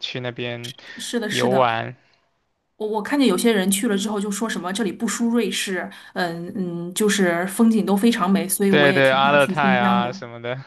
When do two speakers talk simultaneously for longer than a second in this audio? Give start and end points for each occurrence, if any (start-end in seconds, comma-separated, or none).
8.7-10.1